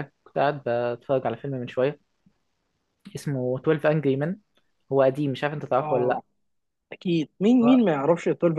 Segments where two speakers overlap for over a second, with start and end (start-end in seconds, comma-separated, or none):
none